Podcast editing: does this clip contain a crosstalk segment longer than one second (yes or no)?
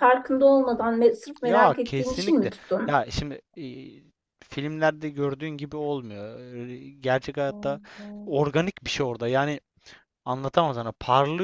yes